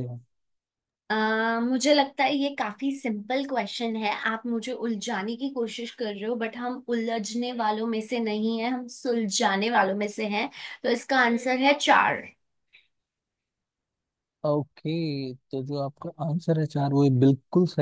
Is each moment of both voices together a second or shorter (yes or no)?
yes